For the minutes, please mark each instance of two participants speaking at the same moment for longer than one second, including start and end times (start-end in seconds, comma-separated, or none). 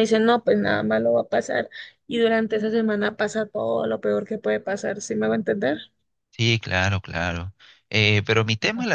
none